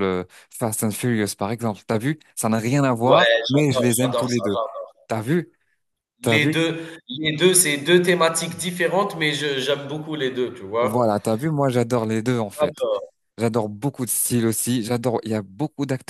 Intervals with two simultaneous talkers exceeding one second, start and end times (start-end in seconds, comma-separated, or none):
3.0-4.6